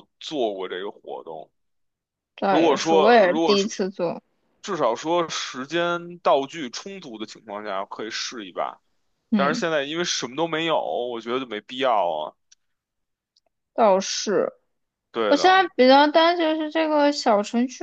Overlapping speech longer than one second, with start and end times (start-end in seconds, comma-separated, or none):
2.5-3.7